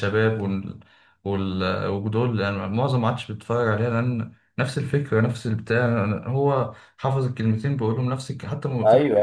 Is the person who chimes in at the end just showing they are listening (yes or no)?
no